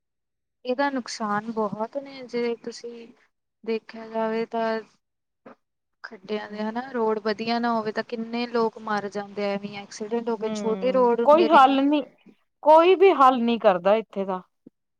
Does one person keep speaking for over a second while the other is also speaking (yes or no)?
yes